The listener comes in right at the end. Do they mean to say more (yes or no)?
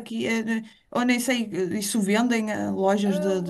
yes